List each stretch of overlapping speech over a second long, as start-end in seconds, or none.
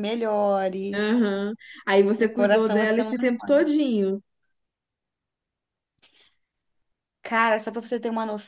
2.2-3.7